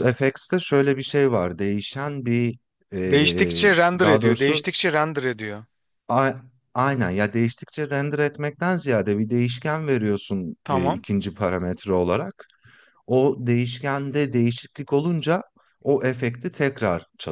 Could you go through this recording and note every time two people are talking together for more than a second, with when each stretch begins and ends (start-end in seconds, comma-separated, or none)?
3.1-4.6